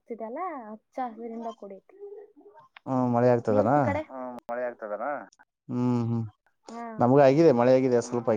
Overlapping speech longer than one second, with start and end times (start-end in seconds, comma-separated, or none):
none